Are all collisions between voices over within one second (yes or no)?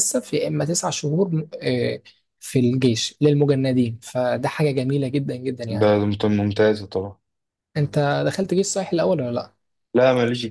yes